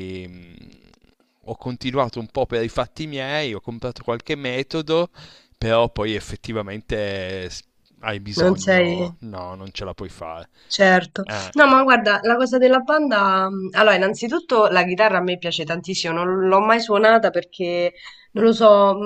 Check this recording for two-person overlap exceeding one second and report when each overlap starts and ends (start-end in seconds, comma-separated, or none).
none